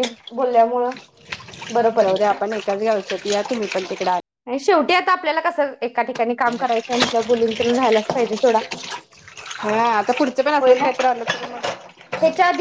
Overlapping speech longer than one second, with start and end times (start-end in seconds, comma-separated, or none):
none